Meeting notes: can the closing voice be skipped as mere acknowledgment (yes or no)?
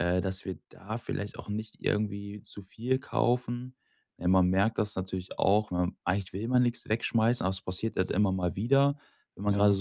yes